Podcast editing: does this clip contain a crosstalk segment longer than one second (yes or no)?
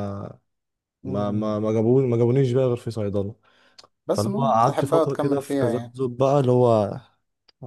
yes